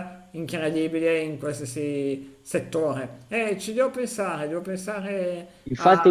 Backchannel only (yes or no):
no